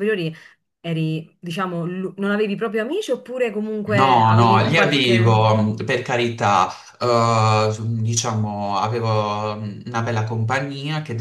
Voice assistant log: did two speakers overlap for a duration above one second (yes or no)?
yes